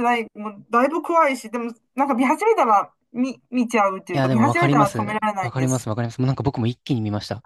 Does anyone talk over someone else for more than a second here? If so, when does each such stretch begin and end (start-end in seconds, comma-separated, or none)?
4.1-5.9